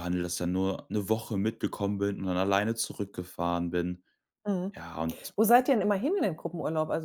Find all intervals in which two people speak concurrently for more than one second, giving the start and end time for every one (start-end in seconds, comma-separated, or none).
none